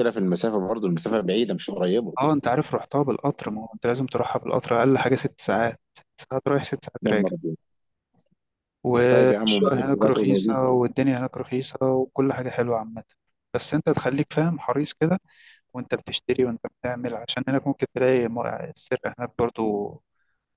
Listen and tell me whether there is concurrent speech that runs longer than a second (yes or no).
yes